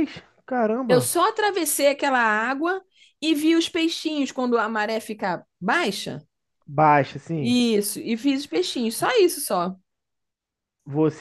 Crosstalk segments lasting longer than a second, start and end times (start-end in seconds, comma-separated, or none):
none